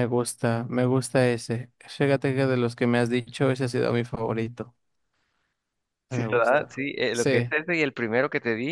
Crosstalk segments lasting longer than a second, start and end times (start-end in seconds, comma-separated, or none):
6.1-7.5